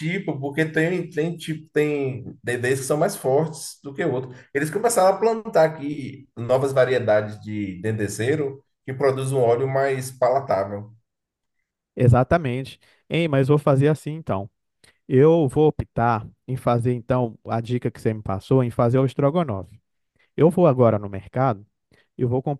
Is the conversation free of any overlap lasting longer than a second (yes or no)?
yes